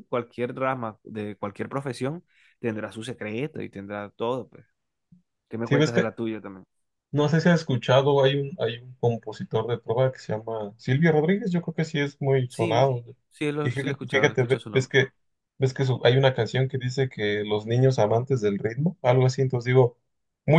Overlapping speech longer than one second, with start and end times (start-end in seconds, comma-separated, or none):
13.6-14.9